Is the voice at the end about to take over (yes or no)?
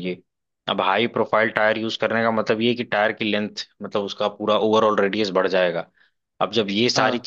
no